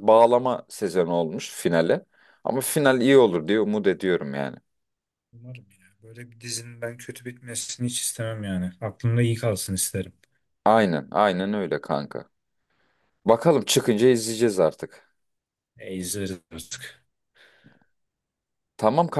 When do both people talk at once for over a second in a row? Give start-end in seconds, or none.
none